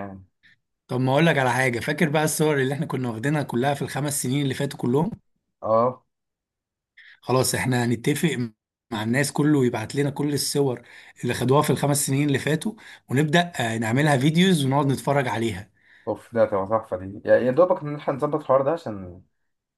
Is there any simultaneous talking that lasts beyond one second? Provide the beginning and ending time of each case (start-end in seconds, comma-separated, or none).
none